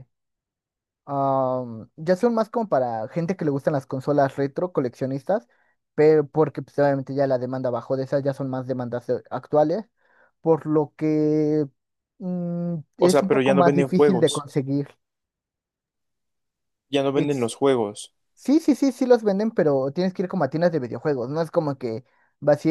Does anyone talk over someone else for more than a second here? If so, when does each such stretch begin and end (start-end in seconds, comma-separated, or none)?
13.0-14.4